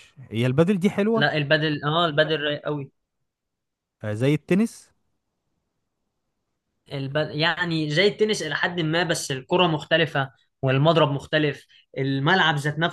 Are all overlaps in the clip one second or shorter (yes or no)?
yes